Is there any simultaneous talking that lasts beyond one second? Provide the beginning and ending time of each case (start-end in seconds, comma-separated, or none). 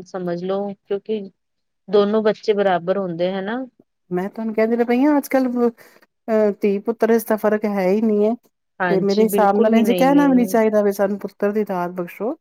8.9-10.3